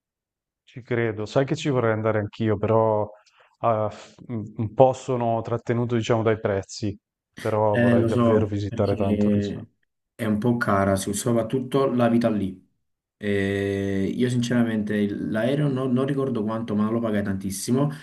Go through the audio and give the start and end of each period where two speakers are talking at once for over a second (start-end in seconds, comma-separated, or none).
7.7-9.7